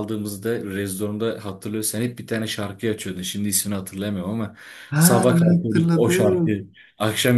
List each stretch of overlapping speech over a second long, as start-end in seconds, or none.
5.0-6.7